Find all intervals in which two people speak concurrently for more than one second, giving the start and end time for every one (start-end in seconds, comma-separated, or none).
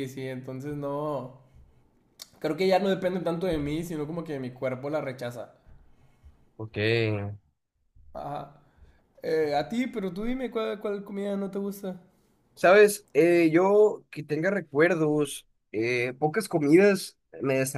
none